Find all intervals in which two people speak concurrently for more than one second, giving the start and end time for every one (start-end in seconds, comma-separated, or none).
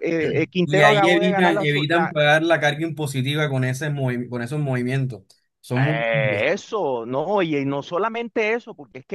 0.7-2.1